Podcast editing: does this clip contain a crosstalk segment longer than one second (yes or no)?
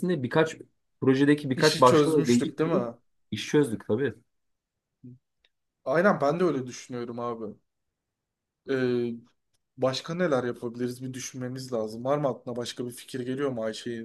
yes